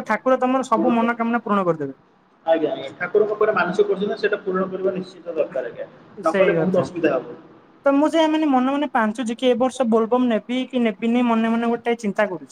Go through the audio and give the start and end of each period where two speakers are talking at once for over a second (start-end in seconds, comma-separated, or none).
none